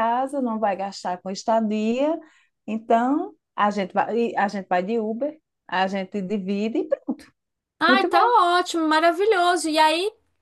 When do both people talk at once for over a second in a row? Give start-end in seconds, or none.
none